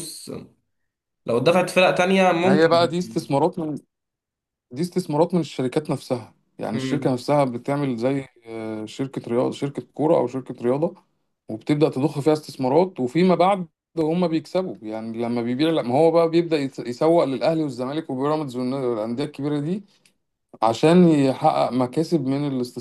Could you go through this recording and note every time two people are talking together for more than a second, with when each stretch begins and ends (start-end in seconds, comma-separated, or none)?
none